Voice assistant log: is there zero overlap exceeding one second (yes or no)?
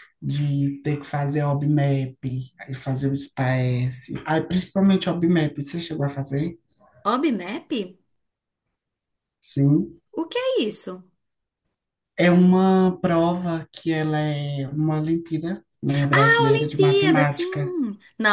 no